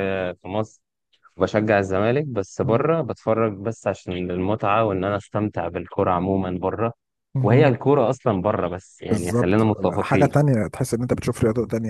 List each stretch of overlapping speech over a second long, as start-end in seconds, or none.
9.0-10.3